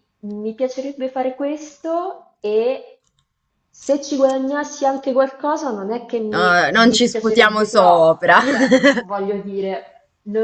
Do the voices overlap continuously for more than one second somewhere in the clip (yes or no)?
yes